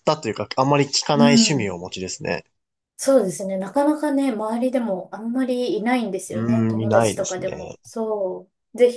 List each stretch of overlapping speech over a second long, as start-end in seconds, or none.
6.3-7.8